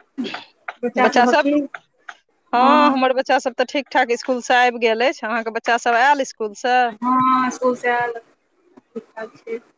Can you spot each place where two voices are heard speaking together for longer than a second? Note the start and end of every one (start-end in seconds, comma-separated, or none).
none